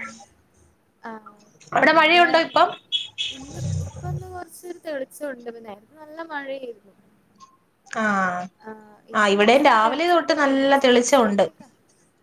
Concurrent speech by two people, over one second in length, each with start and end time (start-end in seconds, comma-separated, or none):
9.3-11.5